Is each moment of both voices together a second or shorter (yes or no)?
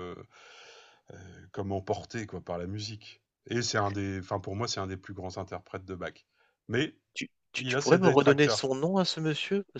no